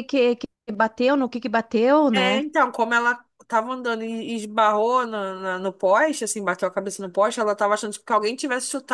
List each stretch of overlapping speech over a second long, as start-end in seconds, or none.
none